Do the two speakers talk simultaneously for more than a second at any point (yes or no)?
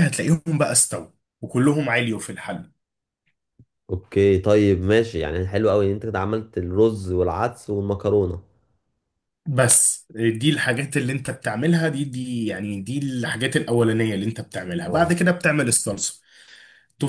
no